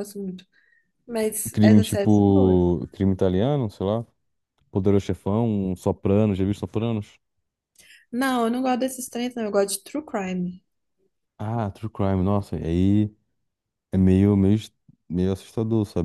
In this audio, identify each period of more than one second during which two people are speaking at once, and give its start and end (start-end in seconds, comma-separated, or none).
1.5-2.8